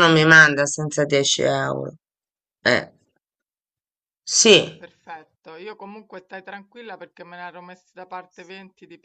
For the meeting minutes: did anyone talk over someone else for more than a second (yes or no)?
no